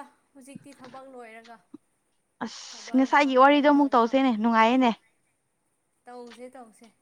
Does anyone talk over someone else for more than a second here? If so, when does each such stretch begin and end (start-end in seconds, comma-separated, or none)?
2.7-4.4